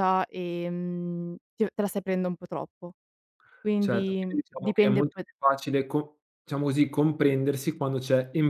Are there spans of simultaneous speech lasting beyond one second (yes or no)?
yes